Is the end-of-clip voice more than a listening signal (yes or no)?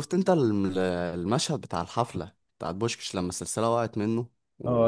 yes